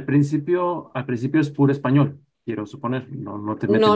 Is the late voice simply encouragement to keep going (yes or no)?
no